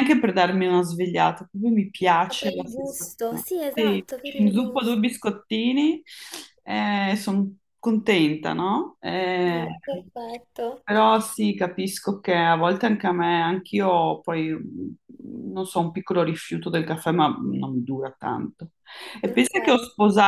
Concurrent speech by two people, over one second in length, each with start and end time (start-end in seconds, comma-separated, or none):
2.2-5.2